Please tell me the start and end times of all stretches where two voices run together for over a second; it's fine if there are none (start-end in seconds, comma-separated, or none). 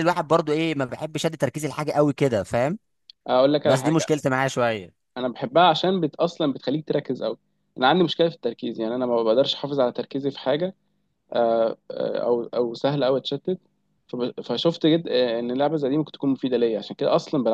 none